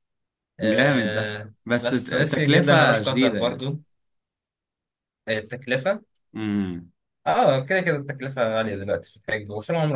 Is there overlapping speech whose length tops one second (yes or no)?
yes